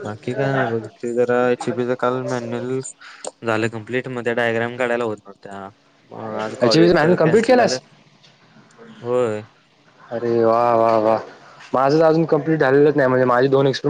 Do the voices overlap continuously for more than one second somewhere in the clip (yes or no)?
yes